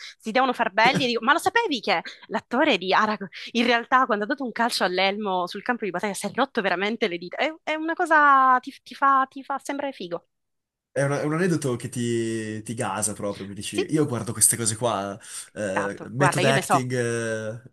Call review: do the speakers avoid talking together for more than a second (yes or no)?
no